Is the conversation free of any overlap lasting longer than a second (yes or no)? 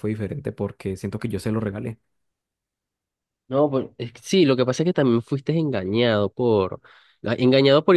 yes